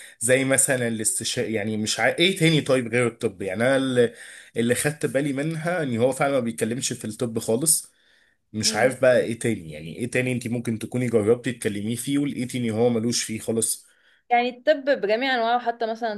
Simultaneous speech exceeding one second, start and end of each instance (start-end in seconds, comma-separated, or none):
none